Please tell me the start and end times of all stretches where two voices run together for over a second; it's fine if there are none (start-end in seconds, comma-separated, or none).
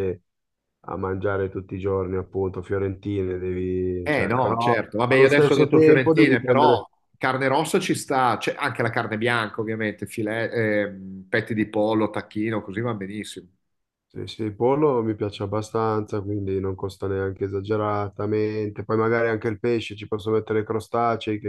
4.0-6.8